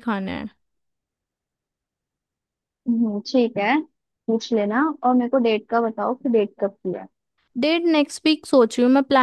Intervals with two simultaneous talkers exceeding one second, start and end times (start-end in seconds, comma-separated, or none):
none